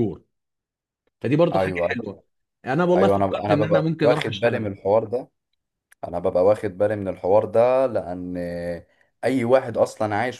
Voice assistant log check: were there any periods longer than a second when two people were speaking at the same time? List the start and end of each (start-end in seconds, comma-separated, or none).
3.0-4.7